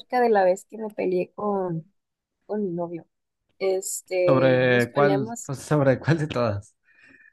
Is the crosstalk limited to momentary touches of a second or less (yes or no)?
no